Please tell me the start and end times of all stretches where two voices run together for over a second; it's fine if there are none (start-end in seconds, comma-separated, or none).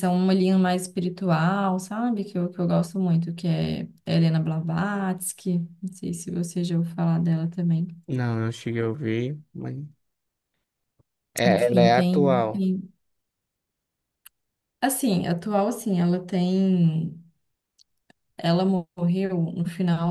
11.4-12.7